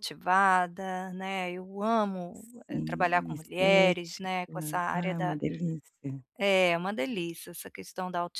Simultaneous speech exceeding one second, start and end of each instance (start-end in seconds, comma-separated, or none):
2.9-5.4